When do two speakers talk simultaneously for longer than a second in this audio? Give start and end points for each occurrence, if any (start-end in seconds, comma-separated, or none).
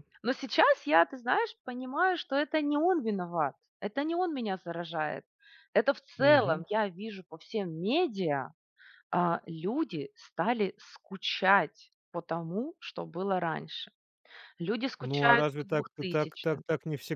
15.0-16.6